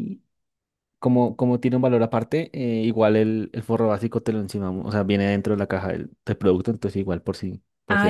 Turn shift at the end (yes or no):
yes